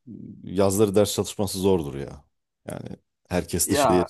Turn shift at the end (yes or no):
no